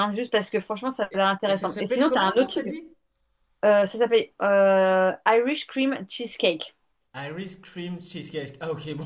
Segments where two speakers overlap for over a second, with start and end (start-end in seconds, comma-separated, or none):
1.1-2.7